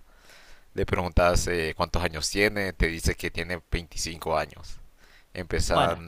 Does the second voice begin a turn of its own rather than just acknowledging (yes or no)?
no